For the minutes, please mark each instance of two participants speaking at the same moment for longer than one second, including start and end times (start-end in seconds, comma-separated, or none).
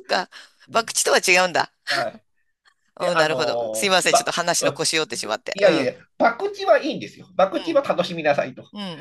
3.0-4.3